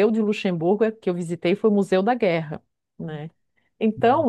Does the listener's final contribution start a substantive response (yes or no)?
no